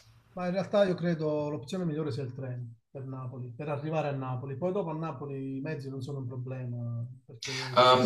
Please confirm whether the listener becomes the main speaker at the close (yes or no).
yes